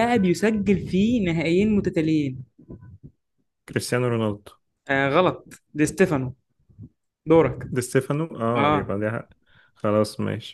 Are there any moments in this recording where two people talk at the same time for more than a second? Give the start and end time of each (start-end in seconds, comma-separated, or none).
none